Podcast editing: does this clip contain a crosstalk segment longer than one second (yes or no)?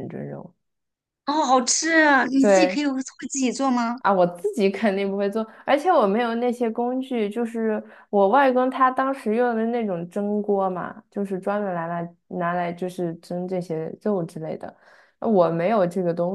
no